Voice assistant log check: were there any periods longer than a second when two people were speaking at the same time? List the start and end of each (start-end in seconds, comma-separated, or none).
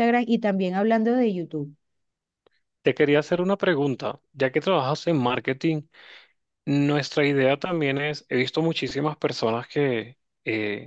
none